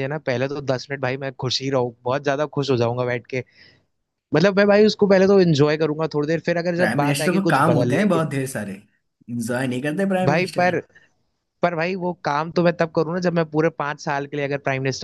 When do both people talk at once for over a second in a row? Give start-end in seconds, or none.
6.8-8.2